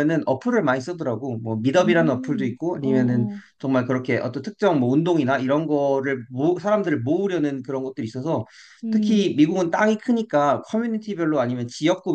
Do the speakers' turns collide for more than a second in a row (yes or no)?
yes